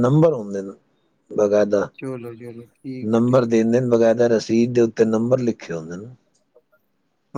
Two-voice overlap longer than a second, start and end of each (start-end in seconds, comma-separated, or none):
none